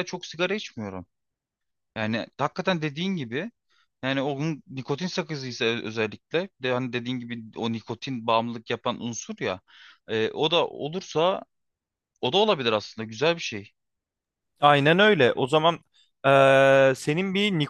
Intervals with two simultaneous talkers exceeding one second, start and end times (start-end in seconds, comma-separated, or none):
none